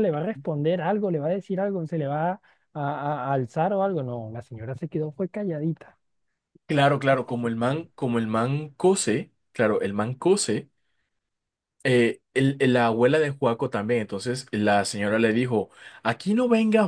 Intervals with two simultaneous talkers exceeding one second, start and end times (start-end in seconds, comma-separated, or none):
none